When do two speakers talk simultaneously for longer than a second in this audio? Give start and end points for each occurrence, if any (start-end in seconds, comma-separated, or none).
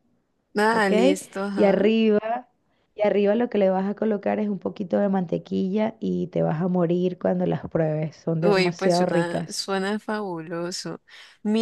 8.4-9.7